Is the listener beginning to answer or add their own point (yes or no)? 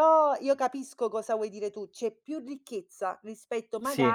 no